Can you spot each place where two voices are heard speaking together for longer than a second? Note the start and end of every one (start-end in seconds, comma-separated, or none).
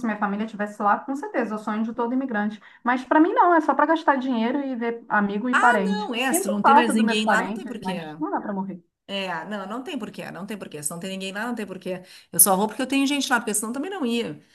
5.5-8.0